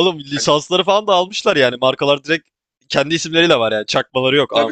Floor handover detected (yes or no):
yes